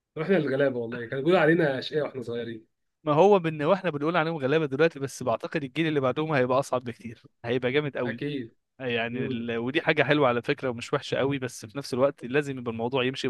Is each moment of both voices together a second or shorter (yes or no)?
yes